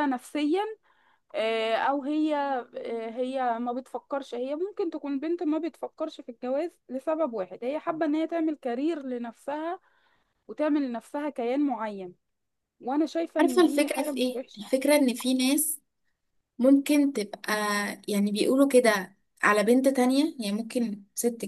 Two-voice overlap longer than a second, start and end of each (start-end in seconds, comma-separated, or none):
13.4-14.6